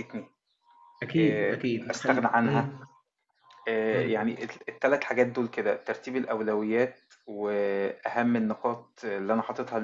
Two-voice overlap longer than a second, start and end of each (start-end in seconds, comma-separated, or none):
1.2-2.7